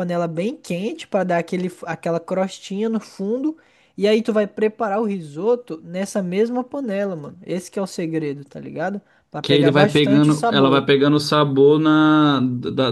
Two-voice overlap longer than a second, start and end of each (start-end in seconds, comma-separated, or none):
9.4-10.8